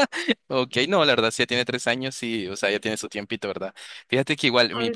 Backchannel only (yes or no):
yes